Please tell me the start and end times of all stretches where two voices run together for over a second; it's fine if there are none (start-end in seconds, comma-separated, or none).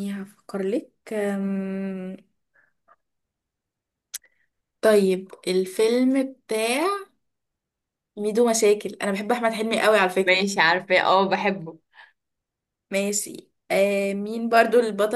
none